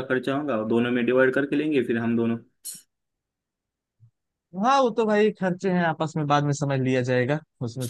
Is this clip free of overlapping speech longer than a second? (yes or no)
yes